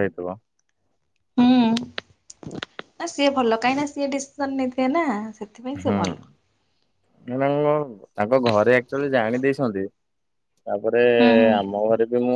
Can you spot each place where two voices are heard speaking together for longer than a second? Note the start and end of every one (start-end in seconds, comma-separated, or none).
none